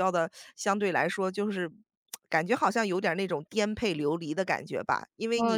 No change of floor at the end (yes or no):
no